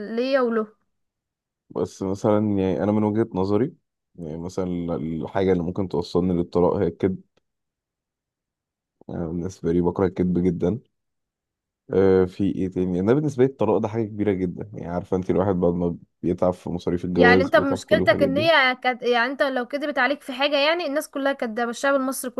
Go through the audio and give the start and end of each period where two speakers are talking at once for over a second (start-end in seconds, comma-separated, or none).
17.2-18.5